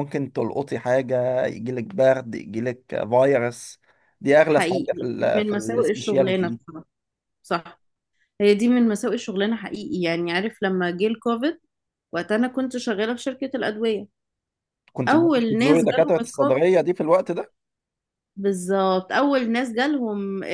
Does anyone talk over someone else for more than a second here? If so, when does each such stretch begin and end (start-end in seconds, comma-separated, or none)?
4.4-6.6, 15.1-16.5